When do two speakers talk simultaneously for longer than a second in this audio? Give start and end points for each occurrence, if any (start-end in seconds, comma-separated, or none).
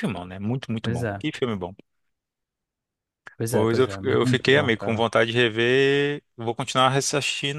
3.5-5.0